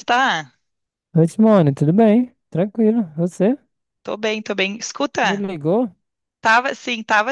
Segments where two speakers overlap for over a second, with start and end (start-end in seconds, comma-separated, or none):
none